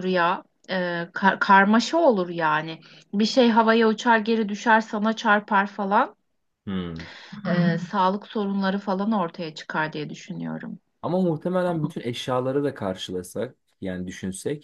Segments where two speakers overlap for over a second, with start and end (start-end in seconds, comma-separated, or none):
none